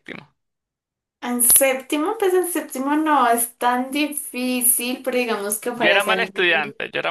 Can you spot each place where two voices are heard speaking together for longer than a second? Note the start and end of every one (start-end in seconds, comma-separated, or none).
none